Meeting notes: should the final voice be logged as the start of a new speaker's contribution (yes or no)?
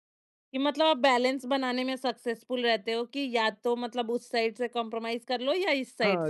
yes